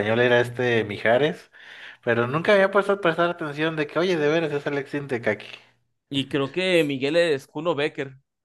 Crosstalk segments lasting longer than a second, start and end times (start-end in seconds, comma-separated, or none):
none